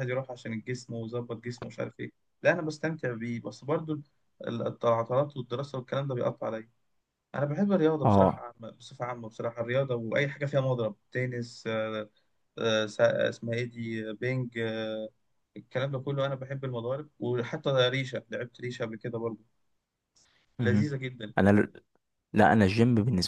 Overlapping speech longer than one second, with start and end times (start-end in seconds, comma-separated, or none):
none